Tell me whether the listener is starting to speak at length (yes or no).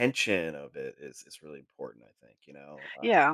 yes